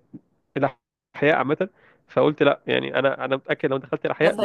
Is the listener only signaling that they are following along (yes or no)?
no